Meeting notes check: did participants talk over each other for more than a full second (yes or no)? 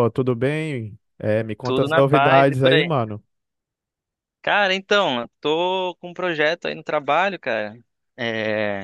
yes